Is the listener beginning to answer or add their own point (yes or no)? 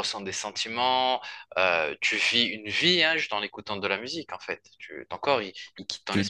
yes